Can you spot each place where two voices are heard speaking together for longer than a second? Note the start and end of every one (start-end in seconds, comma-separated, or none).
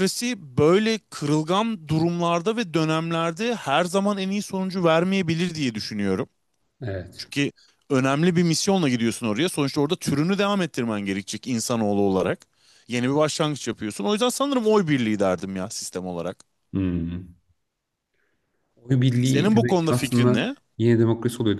19.2-20.6